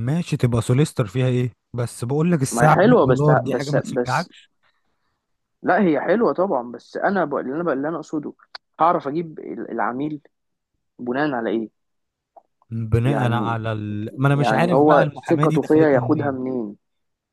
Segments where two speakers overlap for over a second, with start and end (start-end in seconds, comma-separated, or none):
2.5-4.3, 14.3-16.4